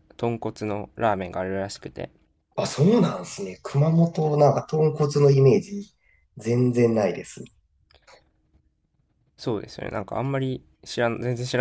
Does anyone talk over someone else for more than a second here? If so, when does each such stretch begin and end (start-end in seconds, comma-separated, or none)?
none